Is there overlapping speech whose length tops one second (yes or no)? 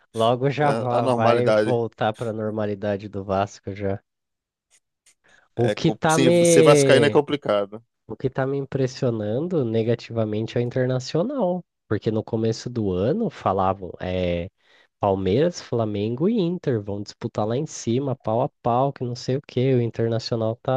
yes